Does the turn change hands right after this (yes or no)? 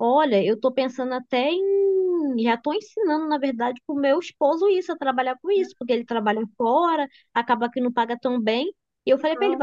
no